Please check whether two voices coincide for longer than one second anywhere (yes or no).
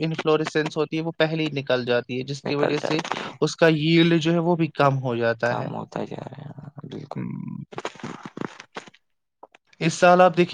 no